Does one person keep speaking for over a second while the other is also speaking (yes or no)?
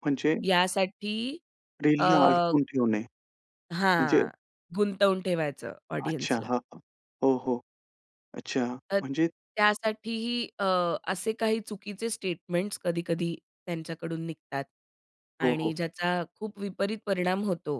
no